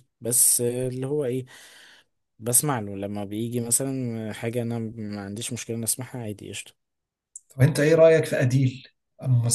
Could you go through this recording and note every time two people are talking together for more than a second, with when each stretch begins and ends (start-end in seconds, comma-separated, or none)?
none